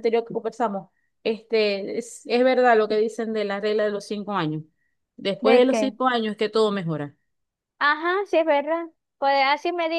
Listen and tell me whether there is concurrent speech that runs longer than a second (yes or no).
no